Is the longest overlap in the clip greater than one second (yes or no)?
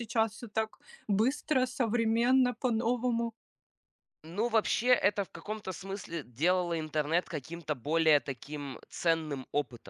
no